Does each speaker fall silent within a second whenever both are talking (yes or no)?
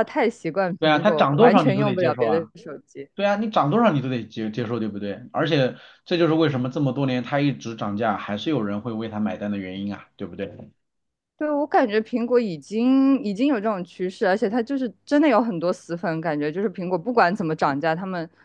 no